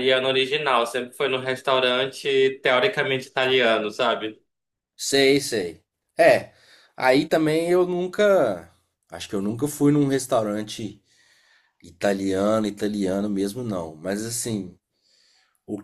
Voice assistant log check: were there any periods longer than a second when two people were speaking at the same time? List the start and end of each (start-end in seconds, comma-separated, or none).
none